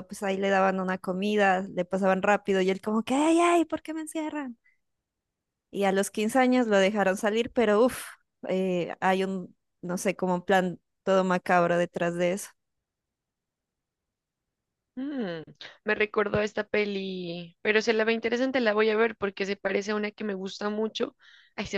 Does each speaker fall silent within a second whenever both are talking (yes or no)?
yes